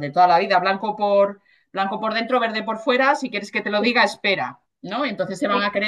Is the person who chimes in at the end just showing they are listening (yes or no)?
yes